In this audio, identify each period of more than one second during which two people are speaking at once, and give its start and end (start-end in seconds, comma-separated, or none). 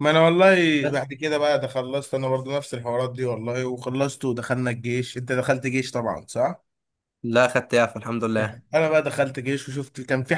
none